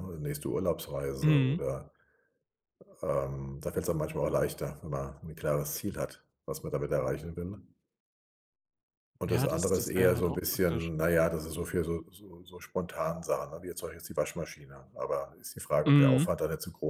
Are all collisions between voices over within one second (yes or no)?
no